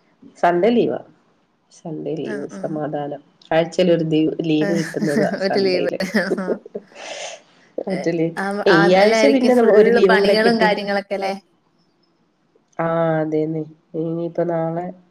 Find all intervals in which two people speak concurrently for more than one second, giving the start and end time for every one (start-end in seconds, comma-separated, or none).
8.8-10.7